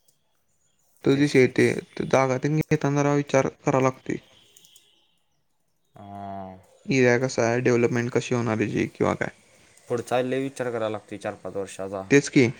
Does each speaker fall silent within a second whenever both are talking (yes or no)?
yes